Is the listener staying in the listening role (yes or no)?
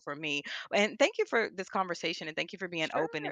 no